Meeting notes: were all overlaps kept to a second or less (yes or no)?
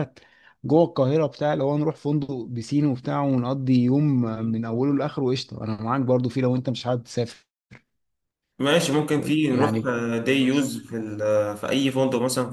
yes